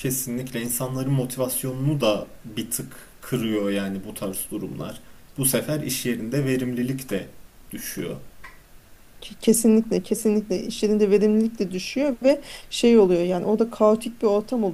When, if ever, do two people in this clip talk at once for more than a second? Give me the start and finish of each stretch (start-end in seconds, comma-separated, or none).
none